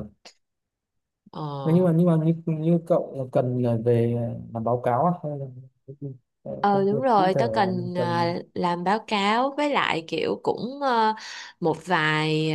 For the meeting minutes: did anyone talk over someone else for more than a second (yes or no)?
yes